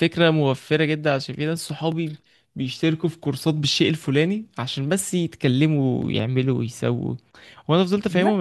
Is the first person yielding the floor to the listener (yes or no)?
no